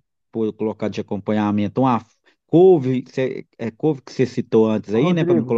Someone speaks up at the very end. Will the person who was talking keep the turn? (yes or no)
no